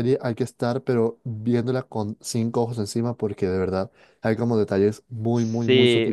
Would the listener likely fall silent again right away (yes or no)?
no